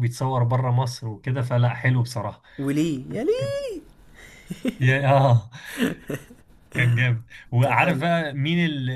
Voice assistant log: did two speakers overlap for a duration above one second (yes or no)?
no